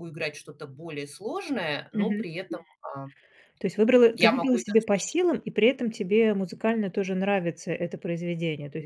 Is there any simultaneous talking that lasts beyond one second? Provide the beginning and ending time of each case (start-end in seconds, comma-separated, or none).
none